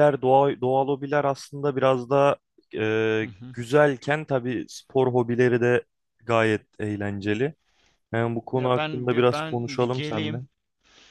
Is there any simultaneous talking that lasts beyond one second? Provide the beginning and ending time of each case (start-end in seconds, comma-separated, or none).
8.6-10.4